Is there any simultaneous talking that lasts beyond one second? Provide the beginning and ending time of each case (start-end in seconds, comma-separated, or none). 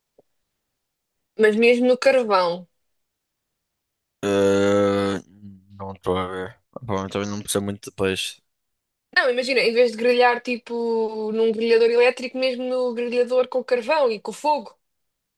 none